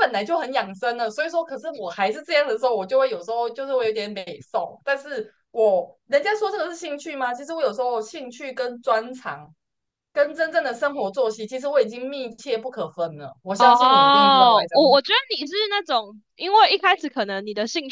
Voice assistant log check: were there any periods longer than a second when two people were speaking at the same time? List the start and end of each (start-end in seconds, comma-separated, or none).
13.6-15.0